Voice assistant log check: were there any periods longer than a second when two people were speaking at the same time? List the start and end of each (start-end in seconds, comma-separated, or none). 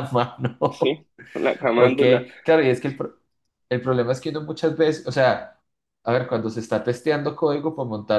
none